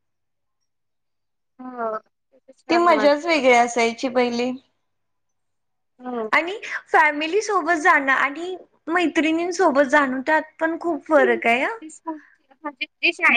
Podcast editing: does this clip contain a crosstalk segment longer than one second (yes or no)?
no